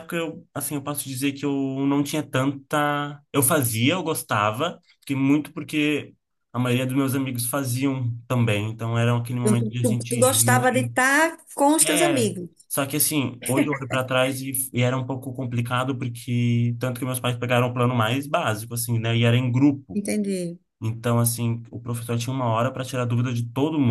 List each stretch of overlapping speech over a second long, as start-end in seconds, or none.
9.4-10.9